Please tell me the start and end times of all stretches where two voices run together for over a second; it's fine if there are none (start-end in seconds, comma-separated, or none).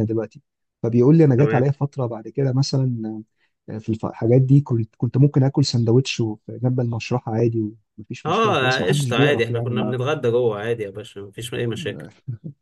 8.2-9.9